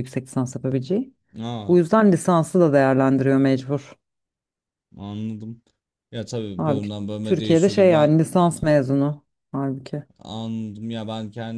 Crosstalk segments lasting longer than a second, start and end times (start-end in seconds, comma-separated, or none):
6.6-8.1